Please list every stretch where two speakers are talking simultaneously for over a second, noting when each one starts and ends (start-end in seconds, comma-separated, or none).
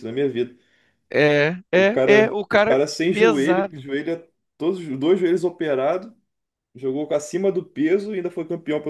1.7-3.9